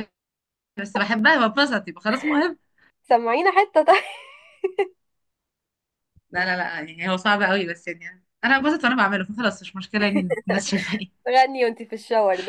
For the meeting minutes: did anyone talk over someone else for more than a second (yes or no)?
no